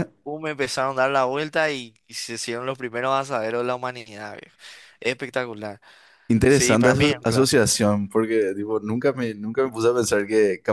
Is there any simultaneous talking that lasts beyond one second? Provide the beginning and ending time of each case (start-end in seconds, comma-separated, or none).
6.5-7.7